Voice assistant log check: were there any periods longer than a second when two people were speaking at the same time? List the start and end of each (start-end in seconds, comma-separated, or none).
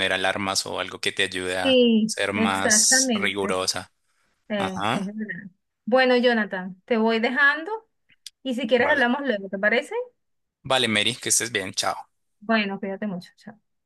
1.6-3.6